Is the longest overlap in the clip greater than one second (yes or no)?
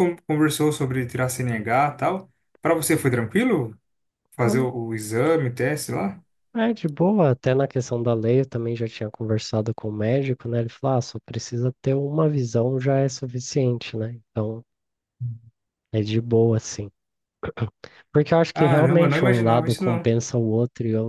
yes